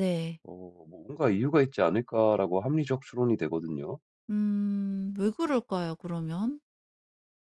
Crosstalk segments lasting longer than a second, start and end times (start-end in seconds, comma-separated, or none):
none